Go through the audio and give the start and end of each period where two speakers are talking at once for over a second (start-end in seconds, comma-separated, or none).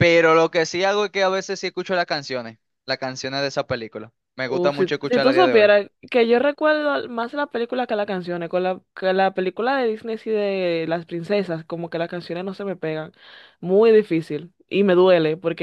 4.5-5.7